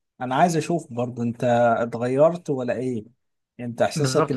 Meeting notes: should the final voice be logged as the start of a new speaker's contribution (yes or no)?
yes